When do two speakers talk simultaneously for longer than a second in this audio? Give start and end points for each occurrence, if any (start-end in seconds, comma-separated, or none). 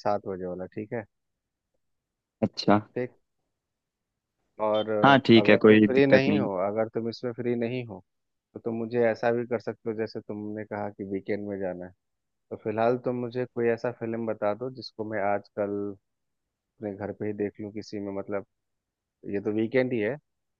5.0-6.5